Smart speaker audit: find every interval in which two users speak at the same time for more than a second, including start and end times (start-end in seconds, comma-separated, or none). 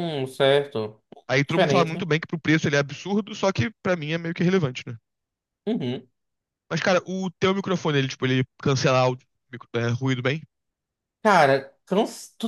none